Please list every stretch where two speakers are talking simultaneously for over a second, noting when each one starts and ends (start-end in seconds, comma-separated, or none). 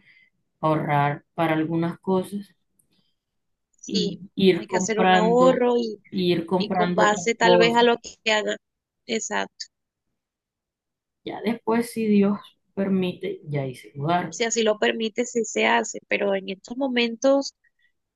3.9-5.6, 6.6-7.8